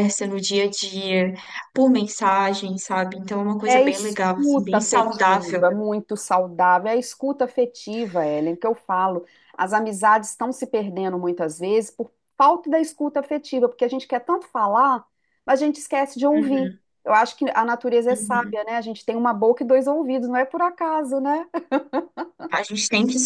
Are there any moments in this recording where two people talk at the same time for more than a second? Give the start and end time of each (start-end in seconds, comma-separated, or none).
3.7-5.7